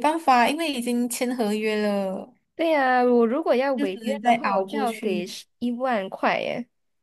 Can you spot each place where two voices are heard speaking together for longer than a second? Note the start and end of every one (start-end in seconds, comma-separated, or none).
3.8-5.3